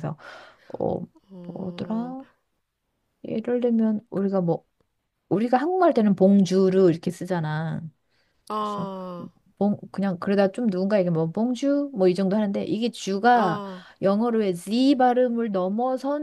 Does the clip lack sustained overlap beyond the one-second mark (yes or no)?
yes